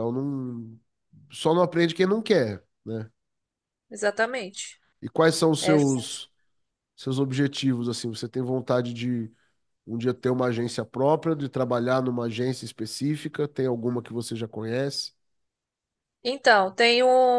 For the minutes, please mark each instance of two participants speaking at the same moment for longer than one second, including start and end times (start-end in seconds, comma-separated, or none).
none